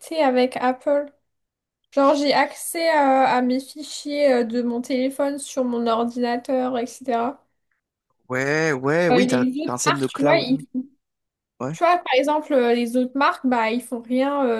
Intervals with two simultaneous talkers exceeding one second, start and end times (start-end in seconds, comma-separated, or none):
9.1-10.6